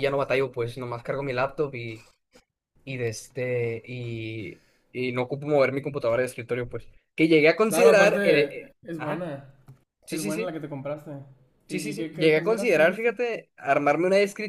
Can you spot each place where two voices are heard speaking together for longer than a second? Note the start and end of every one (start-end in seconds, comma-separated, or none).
7.7-9.3, 11.7-13.2